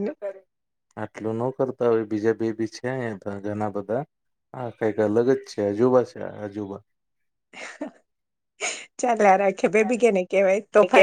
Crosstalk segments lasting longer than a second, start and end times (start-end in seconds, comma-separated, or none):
none